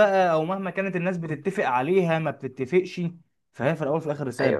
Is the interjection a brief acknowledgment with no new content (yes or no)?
no